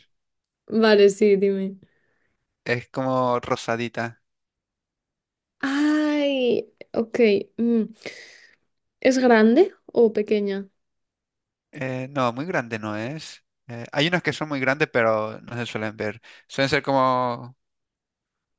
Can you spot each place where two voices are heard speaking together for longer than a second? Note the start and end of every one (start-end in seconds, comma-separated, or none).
none